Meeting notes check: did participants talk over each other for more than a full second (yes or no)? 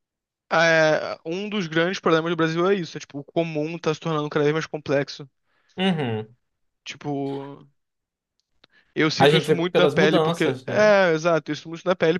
yes